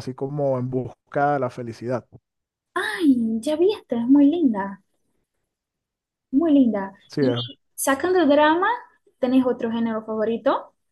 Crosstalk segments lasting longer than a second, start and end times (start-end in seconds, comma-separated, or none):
none